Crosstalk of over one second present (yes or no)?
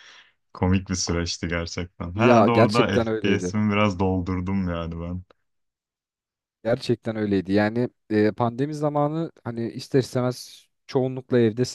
yes